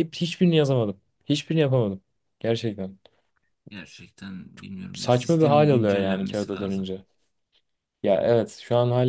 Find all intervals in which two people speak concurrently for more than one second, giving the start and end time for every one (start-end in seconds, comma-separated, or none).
4.9-6.9